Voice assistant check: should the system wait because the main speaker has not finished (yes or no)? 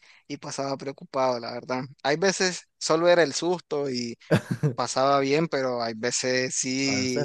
yes